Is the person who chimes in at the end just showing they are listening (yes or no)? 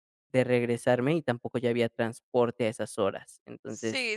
no